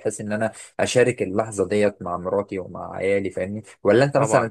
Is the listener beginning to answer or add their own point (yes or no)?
no